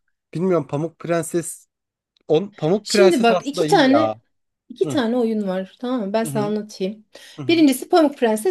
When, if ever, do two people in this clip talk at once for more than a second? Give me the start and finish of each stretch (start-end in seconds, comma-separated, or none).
2.8-4.2